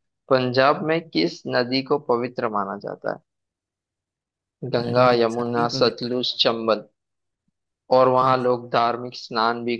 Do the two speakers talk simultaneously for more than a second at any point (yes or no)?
yes